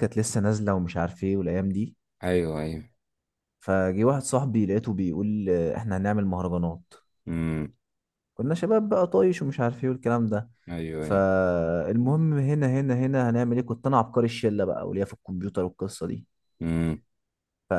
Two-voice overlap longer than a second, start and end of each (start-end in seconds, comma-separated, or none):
none